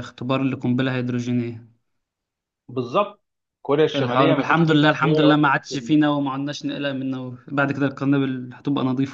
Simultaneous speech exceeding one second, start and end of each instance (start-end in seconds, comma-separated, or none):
3.9-6.0